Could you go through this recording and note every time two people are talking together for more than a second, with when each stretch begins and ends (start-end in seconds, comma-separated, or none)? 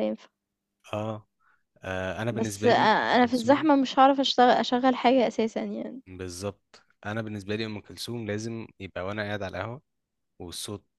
2.3-3.7